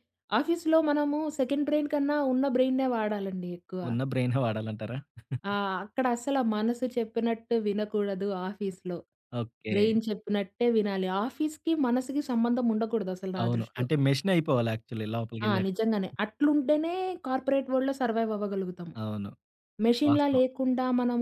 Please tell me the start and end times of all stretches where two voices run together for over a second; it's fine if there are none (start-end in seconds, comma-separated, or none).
none